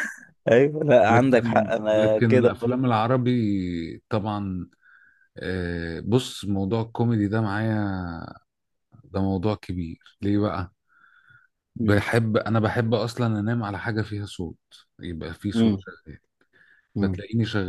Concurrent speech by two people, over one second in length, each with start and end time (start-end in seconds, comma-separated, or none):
1.1-2.8